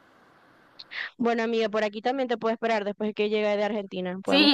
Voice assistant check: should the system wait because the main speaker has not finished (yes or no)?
no